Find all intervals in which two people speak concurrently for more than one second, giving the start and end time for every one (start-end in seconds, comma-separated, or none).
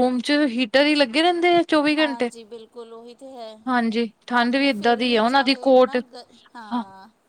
4.4-6.0